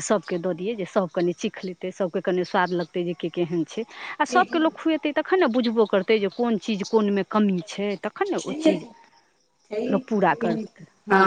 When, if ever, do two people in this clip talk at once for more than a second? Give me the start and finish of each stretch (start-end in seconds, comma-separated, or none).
none